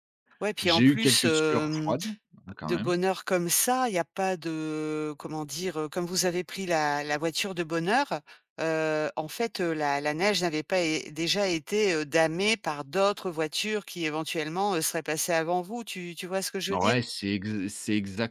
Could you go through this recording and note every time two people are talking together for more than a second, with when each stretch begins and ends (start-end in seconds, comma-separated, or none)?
0.6-1.9